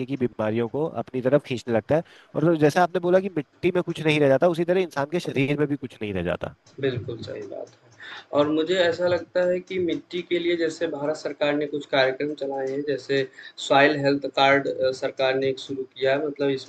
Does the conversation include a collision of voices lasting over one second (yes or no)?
no